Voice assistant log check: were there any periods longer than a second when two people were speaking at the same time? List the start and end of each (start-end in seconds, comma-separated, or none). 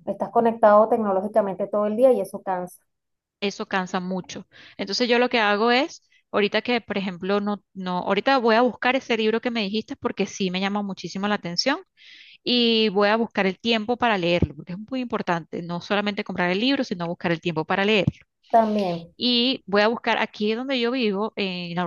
none